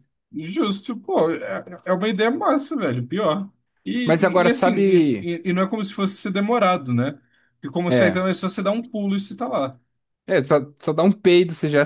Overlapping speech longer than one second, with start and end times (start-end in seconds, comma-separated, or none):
4.0-5.3